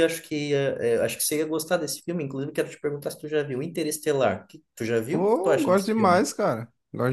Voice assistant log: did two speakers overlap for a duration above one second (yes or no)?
yes